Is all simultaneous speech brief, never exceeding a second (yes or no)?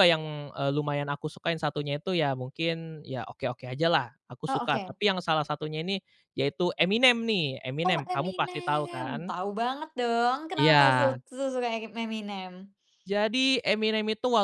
no